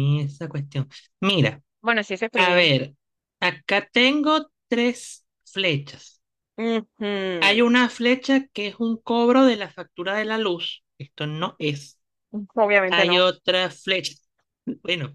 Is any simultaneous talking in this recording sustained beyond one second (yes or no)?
no